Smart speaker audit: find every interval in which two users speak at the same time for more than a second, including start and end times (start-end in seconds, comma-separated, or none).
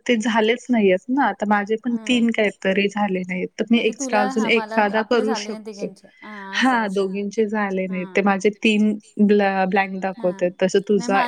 3.7-5.9